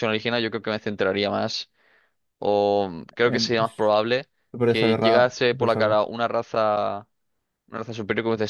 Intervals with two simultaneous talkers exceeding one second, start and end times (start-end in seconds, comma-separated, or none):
4.7-6.0